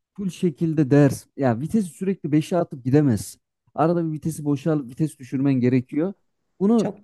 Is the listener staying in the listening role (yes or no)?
yes